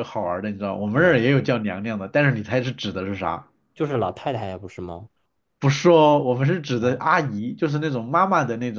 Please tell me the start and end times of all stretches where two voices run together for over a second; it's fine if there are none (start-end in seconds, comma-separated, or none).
none